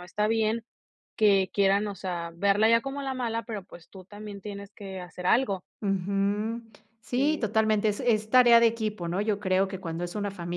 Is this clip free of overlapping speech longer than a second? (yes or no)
yes